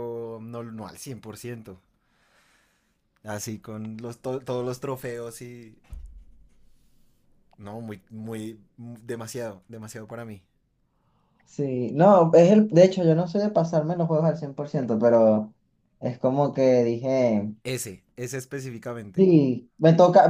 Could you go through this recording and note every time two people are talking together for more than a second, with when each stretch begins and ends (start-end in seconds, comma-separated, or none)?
none